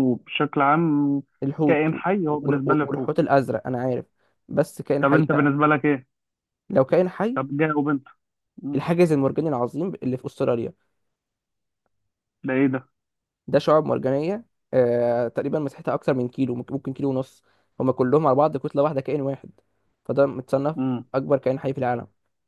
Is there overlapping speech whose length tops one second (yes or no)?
yes